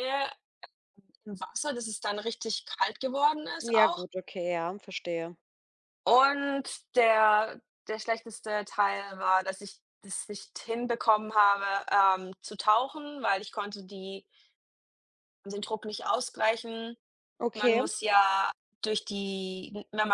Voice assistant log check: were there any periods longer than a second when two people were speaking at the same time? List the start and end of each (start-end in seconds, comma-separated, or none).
none